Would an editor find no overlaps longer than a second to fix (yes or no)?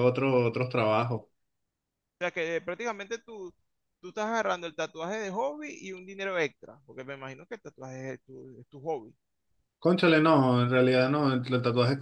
yes